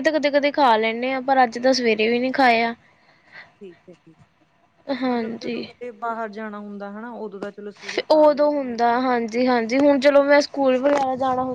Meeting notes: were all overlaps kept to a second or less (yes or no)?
yes